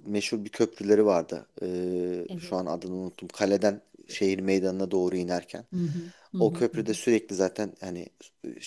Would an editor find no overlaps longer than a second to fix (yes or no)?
yes